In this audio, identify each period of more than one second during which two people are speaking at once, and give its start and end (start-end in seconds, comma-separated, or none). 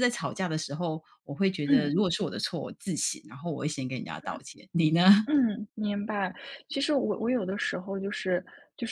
none